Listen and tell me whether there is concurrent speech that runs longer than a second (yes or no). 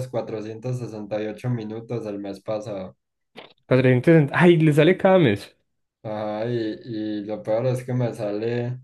no